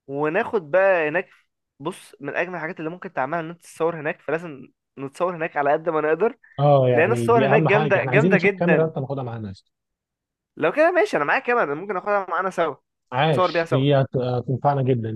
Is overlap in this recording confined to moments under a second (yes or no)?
no